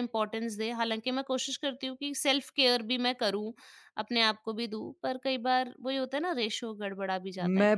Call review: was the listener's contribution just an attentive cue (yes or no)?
no